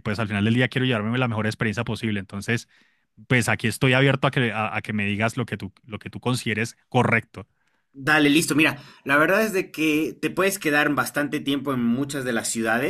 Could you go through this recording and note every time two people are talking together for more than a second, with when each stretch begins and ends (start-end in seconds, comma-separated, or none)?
none